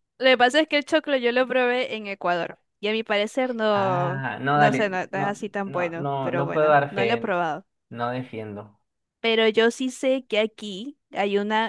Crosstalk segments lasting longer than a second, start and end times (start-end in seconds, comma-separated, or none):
3.7-7.3